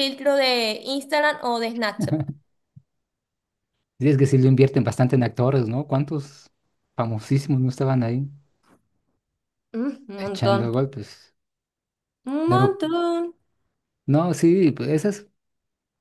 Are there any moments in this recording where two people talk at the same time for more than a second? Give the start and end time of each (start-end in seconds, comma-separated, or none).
none